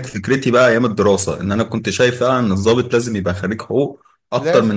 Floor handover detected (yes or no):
no